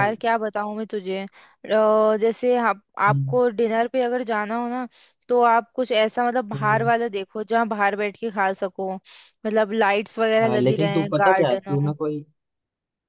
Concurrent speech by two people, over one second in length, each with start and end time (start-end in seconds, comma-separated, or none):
10.4-11.9